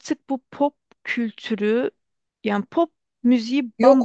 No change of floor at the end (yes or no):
yes